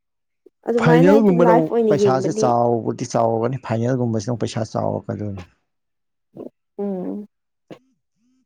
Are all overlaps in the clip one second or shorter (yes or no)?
no